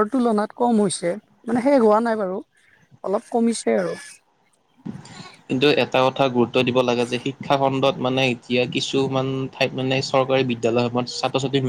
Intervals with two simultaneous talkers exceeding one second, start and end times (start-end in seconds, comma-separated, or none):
none